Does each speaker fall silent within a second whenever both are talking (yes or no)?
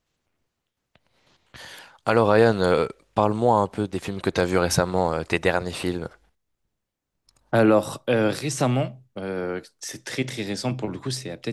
yes